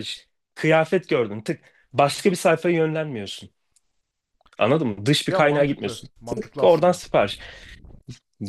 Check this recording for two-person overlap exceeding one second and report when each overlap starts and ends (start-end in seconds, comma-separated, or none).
5.3-7.0